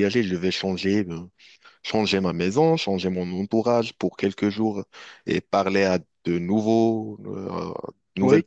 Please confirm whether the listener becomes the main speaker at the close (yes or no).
no